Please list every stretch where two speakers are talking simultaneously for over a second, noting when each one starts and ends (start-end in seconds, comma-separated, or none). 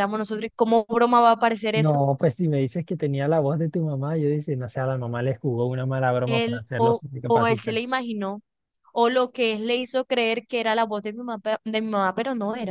6.3-7.8